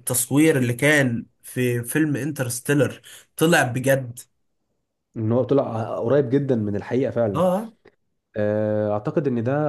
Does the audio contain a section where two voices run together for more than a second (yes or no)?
no